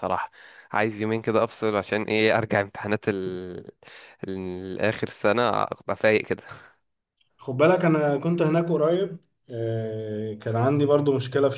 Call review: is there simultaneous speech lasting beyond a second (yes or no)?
no